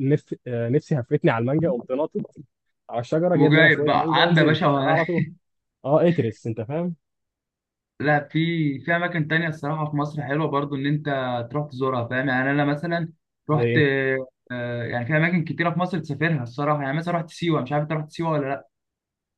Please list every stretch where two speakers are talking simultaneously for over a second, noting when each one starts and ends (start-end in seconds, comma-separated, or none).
3.4-4.7